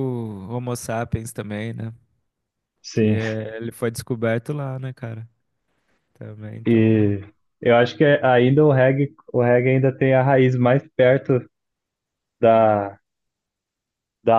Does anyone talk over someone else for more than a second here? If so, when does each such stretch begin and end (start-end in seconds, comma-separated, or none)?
none